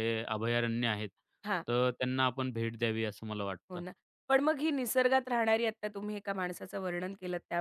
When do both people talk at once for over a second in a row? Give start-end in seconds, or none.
none